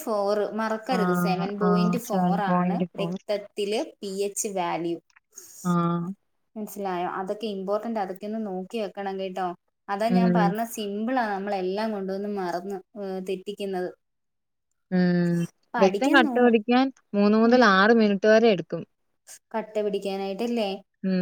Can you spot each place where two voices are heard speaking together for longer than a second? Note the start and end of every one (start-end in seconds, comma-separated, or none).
1.0-3.1